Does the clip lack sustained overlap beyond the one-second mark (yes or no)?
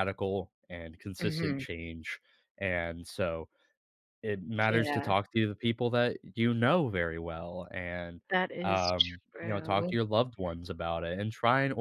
no